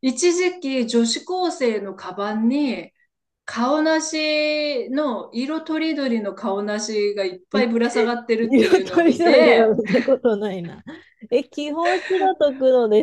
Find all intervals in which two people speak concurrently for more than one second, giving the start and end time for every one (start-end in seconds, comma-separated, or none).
8.4-9.7